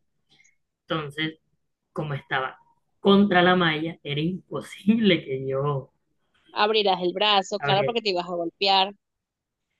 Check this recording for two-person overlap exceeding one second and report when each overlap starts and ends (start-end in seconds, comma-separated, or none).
none